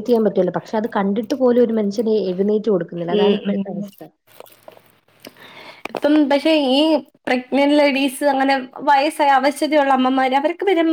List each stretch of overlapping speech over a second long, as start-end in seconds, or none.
none